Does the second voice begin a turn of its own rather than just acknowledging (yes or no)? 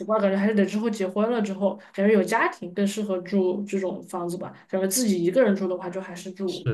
yes